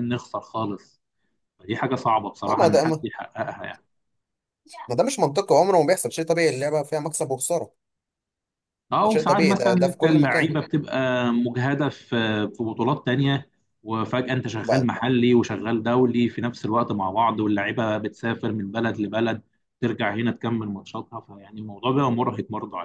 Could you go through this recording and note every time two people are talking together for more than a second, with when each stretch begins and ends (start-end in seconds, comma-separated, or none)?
9.0-10.5